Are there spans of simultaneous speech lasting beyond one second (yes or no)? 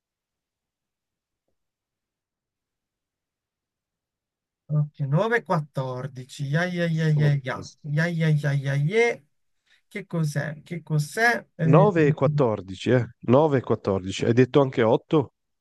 no